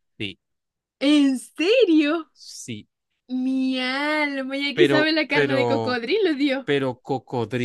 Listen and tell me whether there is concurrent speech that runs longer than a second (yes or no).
yes